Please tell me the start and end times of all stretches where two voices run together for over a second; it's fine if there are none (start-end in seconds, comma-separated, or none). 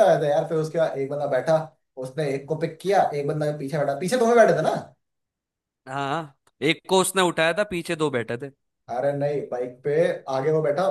none